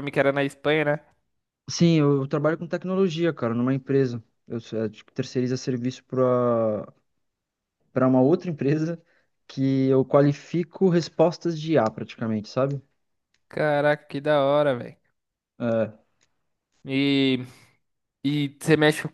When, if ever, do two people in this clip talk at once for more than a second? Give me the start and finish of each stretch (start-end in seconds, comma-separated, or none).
none